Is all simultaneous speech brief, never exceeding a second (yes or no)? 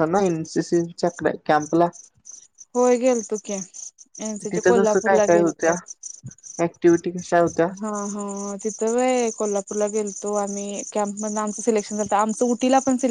yes